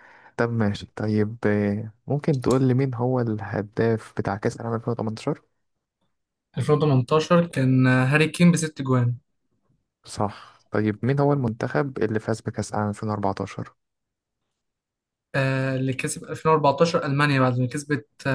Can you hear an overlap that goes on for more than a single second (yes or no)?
no